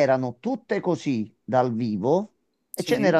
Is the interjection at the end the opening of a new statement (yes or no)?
no